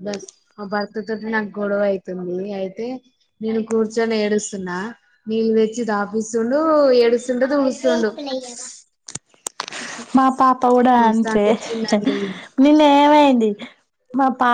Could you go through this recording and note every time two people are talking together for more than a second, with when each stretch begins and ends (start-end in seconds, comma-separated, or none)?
none